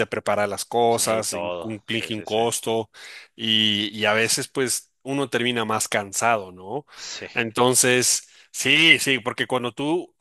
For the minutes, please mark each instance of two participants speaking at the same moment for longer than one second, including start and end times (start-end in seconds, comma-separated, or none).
0.9-2.4